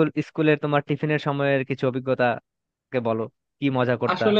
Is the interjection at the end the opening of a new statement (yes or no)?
yes